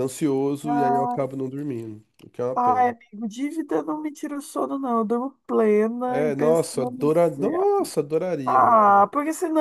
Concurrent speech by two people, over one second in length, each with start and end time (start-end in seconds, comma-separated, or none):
6.1-7.4